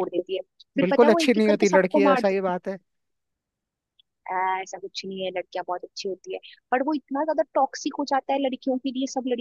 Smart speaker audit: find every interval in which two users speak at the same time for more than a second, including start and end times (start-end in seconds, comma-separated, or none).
0.8-2.5